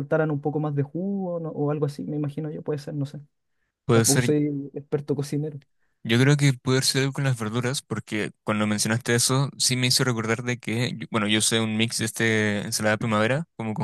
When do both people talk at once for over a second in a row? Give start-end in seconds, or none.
none